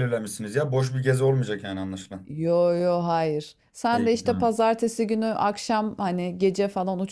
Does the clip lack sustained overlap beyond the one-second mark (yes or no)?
yes